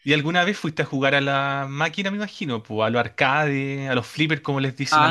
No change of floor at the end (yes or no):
no